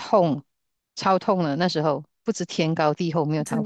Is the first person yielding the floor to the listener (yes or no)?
yes